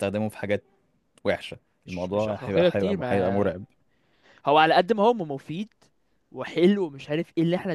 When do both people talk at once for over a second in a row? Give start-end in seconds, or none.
1.9-3.6